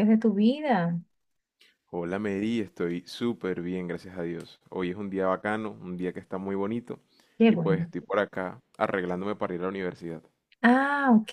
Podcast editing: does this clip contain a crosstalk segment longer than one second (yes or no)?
no